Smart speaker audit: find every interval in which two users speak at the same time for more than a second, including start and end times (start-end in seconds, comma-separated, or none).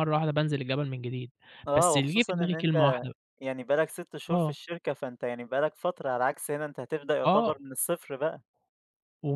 1.7-3.0